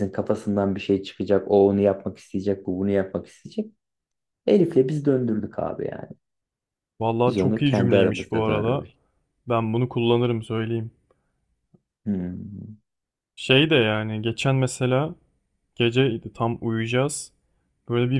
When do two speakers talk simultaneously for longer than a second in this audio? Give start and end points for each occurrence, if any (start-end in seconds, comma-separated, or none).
7.2-8.9